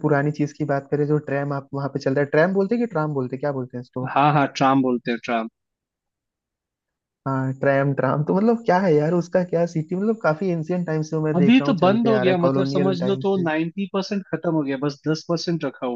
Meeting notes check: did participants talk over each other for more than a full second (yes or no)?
yes